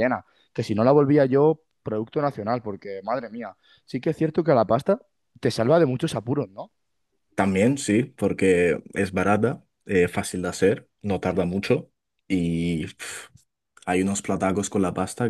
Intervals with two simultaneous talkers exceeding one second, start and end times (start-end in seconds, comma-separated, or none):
none